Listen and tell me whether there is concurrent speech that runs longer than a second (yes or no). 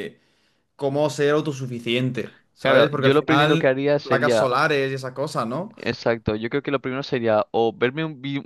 yes